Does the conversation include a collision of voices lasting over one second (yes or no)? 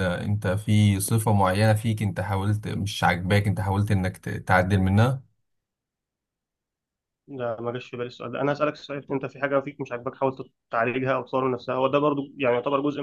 no